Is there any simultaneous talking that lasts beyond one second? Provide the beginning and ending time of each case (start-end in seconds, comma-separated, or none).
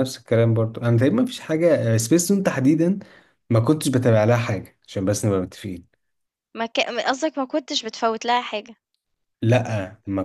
none